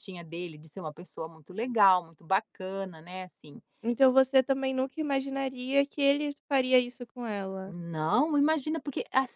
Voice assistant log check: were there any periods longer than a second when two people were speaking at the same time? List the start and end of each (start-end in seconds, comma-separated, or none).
none